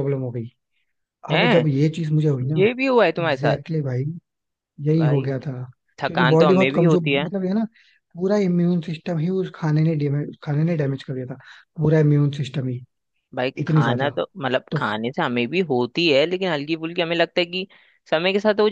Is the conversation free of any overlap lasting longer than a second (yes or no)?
no